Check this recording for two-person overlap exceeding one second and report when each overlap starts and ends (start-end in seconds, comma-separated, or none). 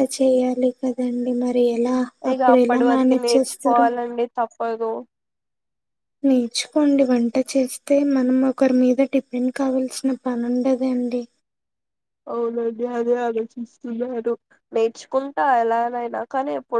2.3-3.9